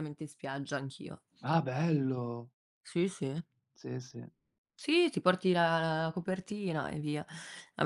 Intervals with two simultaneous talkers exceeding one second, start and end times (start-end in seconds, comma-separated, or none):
none